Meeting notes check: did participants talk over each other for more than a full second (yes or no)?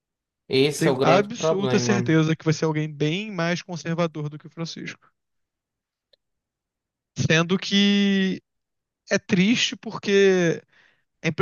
yes